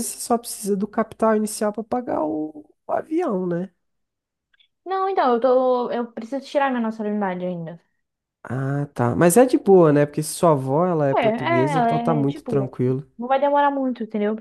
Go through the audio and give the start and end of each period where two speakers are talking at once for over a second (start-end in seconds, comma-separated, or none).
11.2-12.8